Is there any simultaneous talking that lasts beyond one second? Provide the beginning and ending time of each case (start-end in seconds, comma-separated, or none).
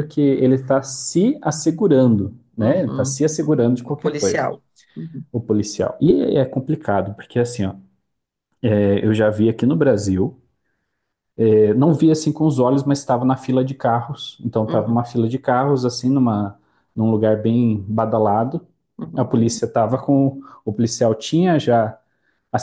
2.6-4.5